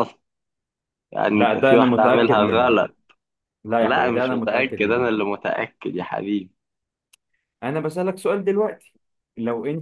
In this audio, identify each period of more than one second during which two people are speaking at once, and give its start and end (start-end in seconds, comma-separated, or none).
1.3-2.7, 3.8-5.1